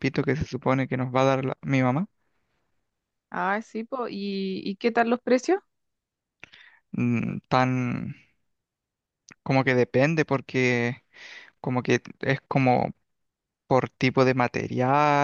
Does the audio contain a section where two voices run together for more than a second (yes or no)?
no